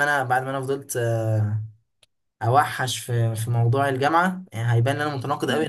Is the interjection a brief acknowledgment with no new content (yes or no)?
yes